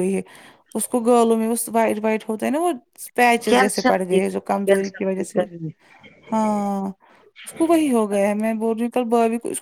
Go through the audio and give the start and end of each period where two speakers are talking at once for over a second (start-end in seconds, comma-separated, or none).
3.5-5.4